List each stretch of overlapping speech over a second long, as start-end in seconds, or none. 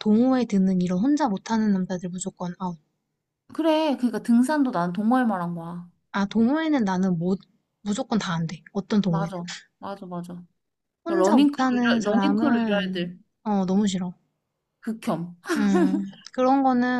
11.1-13.2